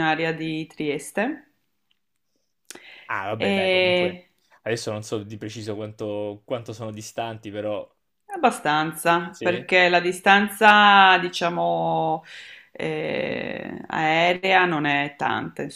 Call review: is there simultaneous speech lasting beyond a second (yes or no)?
no